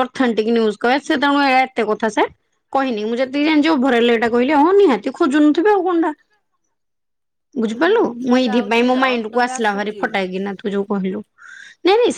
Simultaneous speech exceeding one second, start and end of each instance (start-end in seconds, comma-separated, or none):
7.8-10.0